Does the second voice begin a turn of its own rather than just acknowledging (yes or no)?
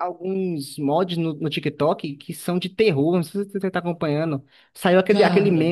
no